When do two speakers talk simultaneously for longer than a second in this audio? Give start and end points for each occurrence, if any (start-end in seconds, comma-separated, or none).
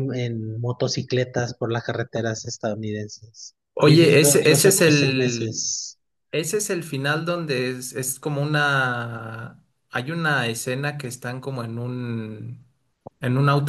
3.7-5.7